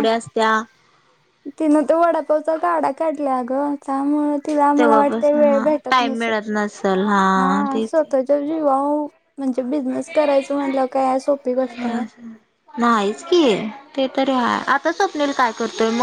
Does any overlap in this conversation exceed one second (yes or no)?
yes